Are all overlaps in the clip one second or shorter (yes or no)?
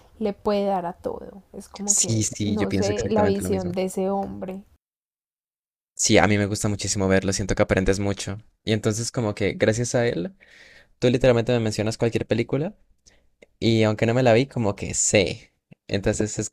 no